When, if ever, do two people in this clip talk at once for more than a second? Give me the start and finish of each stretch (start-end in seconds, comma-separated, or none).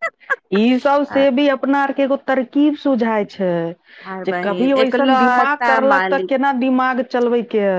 4.2-6.3